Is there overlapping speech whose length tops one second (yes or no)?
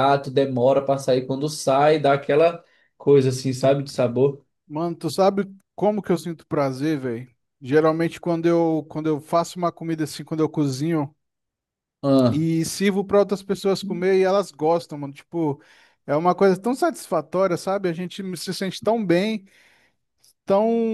no